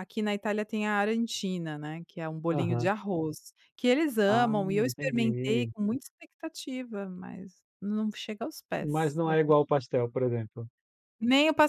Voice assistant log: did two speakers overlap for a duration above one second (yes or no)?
yes